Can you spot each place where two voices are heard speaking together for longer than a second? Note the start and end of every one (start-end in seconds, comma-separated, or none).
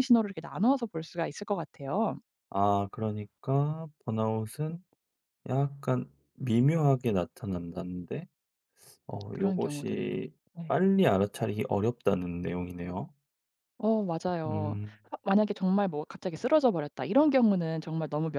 9.3-10.8